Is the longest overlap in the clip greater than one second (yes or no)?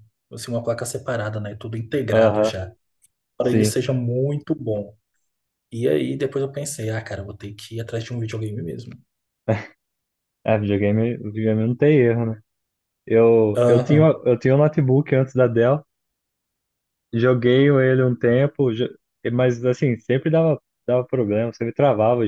no